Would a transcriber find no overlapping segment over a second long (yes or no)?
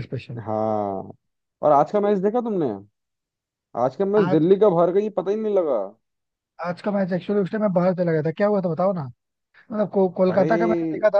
yes